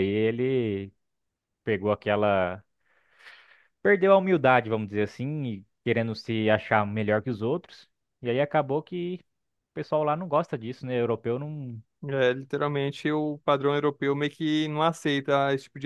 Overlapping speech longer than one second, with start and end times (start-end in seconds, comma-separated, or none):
none